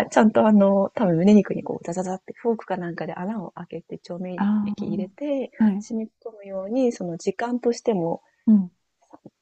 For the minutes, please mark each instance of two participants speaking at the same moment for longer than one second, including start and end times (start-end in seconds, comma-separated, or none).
4.3-5.8